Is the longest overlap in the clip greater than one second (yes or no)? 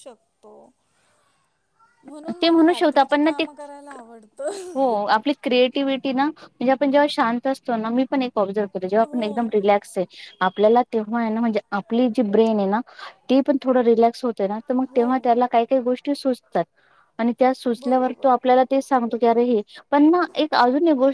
no